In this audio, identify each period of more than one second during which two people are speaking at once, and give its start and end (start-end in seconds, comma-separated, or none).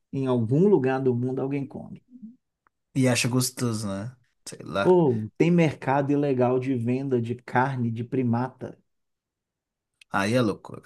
none